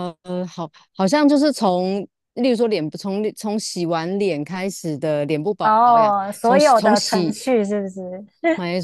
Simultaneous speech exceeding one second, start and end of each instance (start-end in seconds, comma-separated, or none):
5.6-7.4